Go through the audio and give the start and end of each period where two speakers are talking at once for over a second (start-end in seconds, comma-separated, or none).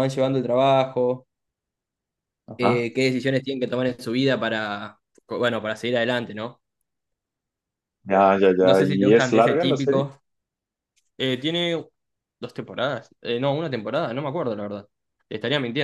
8.6-10.0